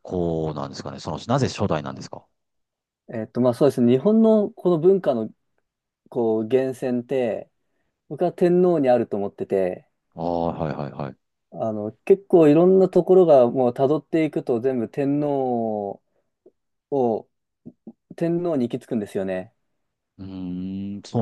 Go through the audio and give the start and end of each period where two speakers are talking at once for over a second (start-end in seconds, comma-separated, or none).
none